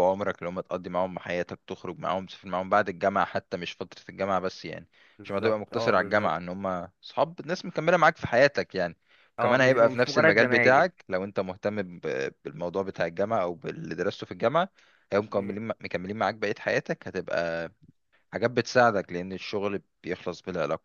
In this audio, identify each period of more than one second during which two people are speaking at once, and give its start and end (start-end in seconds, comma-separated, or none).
5.2-6.5, 9.4-10.9